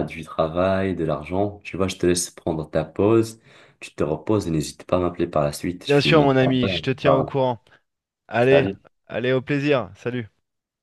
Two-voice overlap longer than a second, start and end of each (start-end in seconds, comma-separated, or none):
5.8-7.3